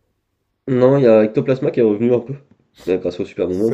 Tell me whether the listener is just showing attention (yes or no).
no